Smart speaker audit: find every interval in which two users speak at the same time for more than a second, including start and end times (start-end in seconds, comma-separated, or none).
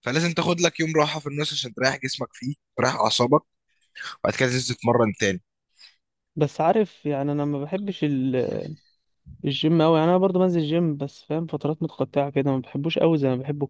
none